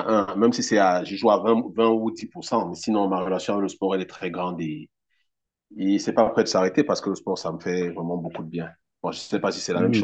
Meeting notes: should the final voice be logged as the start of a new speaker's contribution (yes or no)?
yes